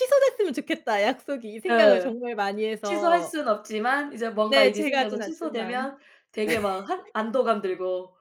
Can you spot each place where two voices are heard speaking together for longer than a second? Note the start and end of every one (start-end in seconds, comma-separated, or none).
4.5-5.9